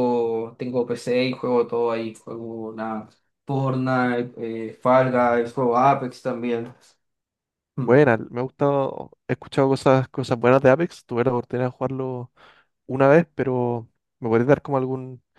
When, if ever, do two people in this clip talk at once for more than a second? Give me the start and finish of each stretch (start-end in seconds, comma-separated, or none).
none